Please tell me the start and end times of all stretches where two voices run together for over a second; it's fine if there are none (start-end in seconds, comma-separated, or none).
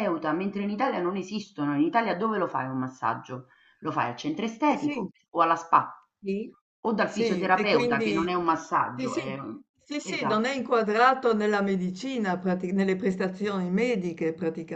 7.0-8.3